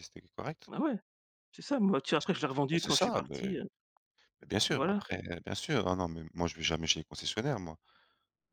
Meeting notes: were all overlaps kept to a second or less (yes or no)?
no